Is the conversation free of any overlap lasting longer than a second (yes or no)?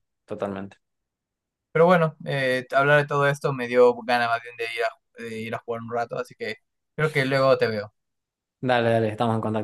yes